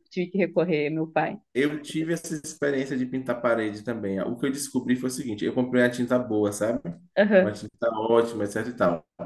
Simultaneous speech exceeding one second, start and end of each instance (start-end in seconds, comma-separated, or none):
none